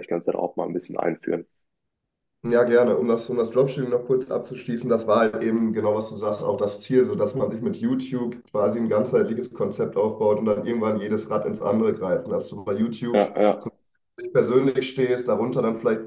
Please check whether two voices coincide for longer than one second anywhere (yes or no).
no